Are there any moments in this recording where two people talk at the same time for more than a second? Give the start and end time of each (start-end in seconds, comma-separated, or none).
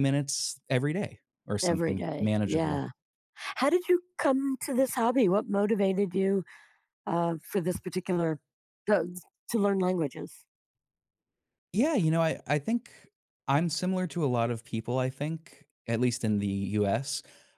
1.6-2.9